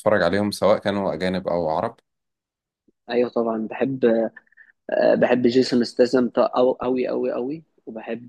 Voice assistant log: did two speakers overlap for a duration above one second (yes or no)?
no